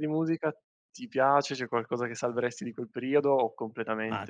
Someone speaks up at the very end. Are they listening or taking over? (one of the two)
taking over